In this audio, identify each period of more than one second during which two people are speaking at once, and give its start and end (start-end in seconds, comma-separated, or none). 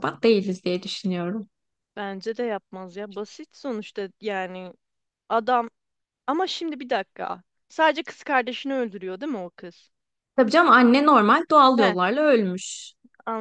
none